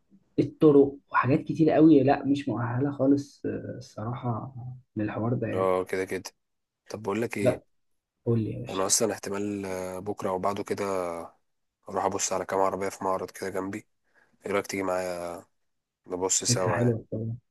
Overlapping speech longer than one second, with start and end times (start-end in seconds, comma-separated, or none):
none